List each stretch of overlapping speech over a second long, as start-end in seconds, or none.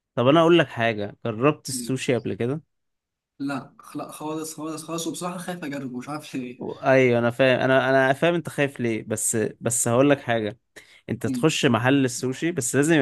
none